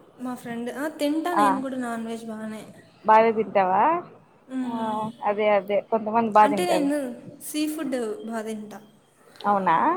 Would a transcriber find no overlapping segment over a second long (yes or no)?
yes